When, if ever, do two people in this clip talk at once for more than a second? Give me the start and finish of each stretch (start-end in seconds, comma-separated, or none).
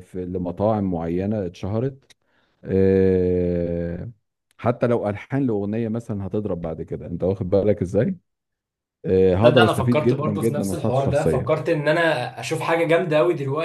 9.4-11.6